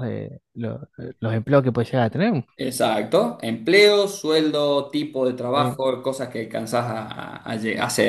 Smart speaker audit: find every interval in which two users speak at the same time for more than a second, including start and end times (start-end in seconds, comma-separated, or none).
none